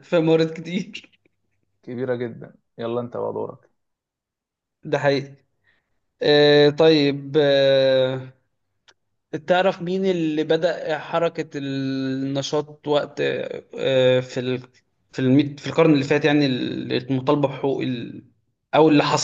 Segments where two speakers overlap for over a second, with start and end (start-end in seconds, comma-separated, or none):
none